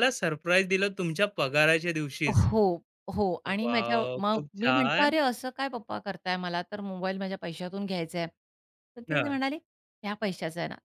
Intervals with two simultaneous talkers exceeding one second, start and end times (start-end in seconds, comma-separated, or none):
3.5-5.2